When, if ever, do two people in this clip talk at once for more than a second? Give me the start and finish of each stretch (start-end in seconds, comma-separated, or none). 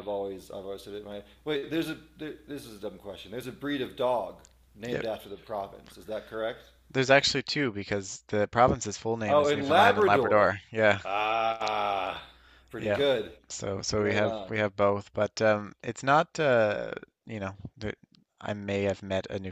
9.3-10.5